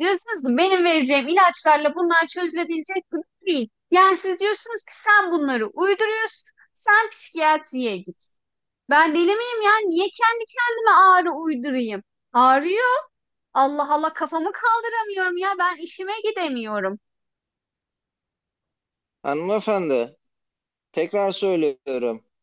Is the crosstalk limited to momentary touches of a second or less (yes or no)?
yes